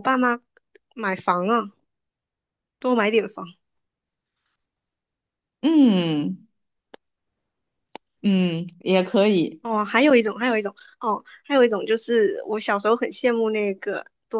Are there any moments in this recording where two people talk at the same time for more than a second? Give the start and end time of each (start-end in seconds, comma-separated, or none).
none